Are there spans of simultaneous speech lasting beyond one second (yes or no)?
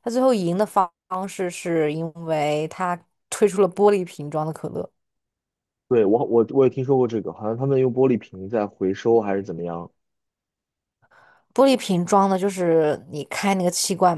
no